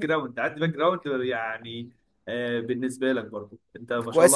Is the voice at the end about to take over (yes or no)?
yes